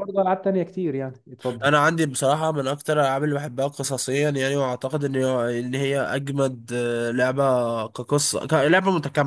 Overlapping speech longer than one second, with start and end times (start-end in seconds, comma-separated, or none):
none